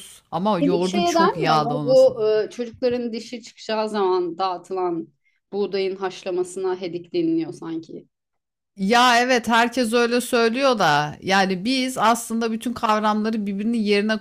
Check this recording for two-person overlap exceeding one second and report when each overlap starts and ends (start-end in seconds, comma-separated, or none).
0.6-2.1